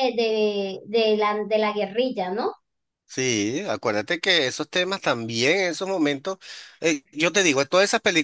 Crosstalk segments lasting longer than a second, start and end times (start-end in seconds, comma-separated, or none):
none